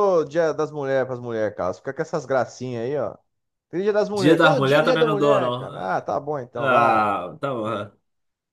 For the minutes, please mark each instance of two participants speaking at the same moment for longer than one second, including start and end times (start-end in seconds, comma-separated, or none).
4.1-5.7